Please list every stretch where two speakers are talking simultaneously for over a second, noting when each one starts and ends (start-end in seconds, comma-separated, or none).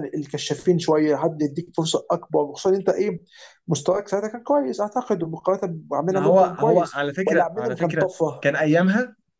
6.1-8.5